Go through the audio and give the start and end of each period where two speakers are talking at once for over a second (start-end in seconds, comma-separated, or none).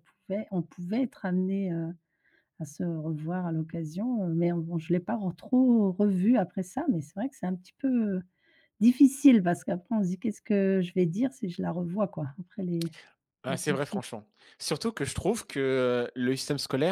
none